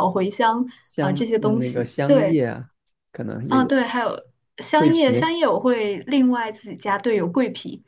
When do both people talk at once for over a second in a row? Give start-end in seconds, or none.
1.0-2.4